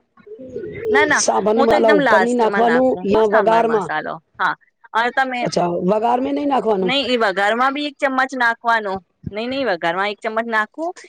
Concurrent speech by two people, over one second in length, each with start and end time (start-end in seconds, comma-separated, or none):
1.7-3.9